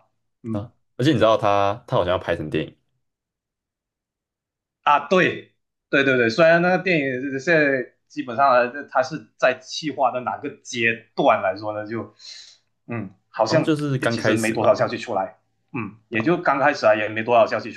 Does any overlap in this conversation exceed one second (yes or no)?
yes